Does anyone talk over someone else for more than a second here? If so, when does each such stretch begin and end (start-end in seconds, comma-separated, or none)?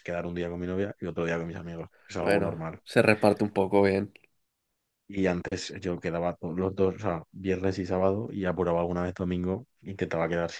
none